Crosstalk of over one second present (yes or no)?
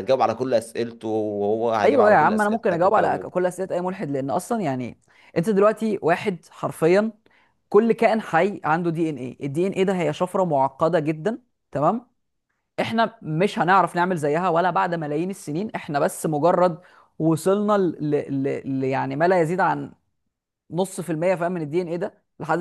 yes